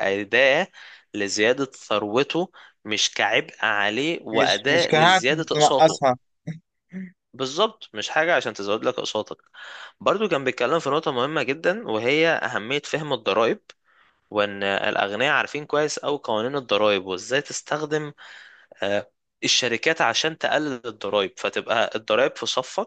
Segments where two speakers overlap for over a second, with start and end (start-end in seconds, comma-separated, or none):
4.3-6.0